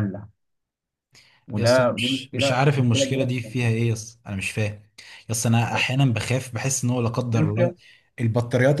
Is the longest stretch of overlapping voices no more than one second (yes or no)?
no